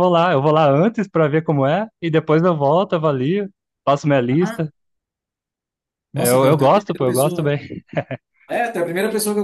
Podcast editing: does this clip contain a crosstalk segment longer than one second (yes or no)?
yes